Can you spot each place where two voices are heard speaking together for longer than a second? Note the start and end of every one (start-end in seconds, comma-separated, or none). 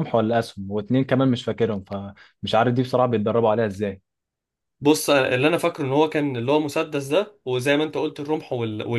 none